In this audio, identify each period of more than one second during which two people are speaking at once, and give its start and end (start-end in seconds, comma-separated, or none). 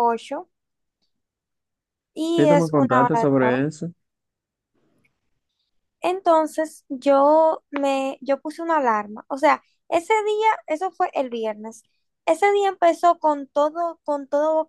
2.4-3.6